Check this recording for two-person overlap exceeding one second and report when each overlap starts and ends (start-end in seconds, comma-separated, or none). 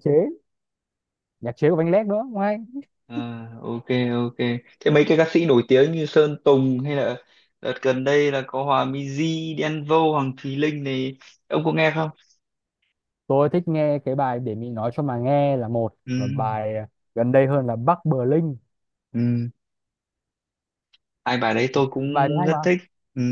none